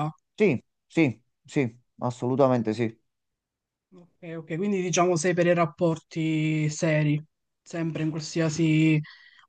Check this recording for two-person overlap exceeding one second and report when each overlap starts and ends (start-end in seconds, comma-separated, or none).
none